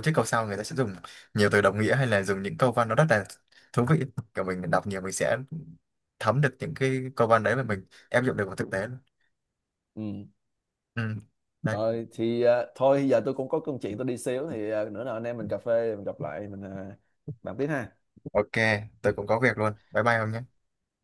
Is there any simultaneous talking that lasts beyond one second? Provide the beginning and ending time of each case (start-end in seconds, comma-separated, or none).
none